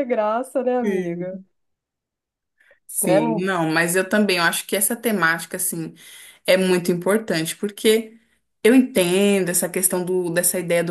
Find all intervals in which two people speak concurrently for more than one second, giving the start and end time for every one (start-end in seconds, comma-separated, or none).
none